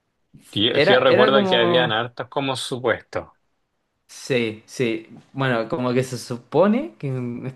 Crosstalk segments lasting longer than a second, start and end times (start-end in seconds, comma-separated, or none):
0.7-1.9